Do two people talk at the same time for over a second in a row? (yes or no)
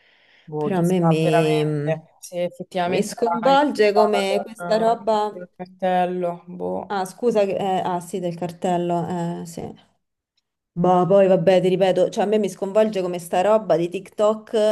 yes